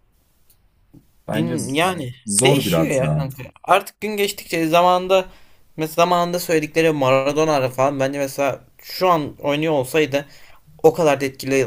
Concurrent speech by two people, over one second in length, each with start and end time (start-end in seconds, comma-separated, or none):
1.3-3.3